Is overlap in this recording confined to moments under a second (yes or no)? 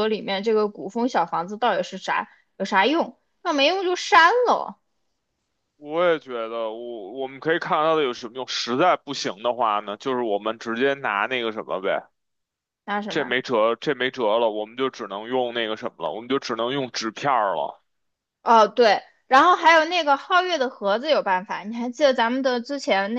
yes